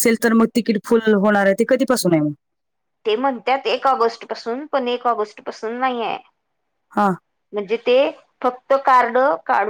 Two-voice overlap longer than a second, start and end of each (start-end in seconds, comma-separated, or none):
none